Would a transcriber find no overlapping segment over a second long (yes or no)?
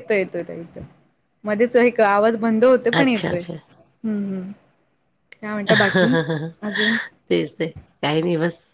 yes